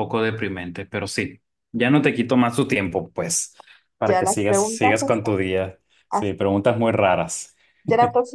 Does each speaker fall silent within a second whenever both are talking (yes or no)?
no